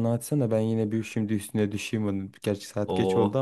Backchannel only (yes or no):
yes